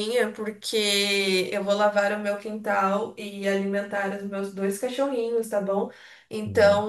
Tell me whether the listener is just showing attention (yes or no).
yes